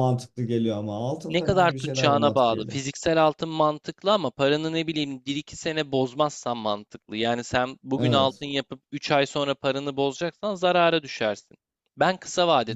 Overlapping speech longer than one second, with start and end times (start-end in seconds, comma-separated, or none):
1.3-2.8